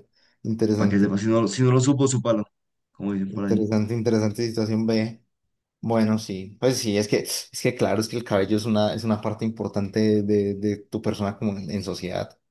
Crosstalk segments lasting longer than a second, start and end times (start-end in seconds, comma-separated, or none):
none